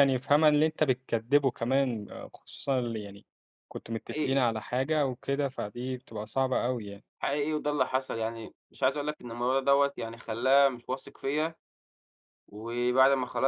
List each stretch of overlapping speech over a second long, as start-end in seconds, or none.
none